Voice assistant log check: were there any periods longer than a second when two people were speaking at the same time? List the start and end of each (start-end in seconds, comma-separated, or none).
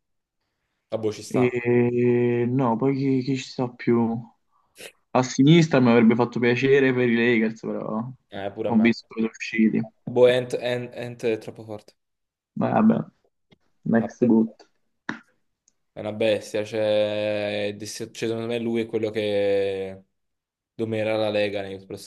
none